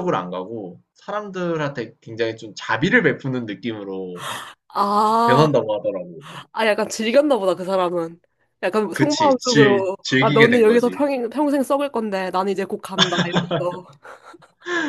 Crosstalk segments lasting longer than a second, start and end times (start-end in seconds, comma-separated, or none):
8.9-11.0